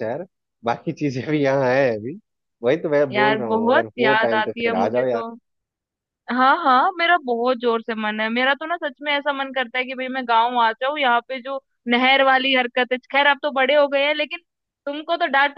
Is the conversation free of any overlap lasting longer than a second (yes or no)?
no